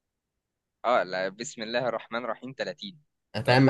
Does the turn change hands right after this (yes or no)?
yes